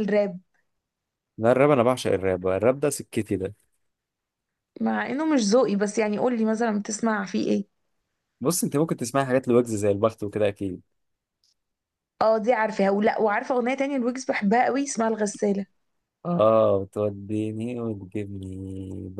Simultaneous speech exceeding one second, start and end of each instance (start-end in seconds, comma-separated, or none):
none